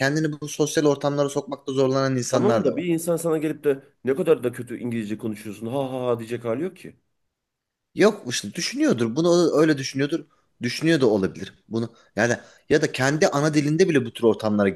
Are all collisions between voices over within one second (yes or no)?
yes